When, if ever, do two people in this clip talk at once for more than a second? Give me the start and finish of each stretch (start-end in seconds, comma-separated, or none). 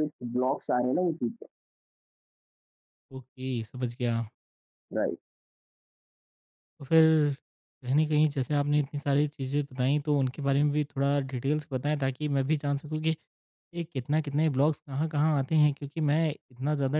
none